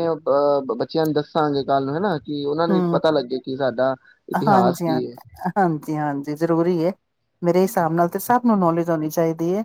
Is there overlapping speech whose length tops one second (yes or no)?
no